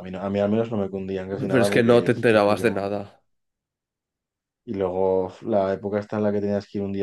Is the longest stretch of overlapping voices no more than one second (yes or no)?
no